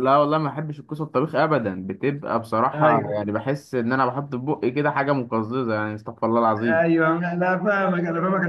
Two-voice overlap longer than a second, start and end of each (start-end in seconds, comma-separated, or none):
none